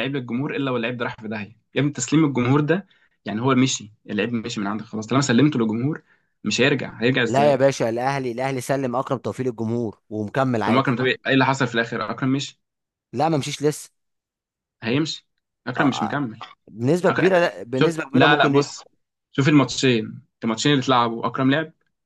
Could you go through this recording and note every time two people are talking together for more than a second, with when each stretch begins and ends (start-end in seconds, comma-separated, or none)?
17.1-18.6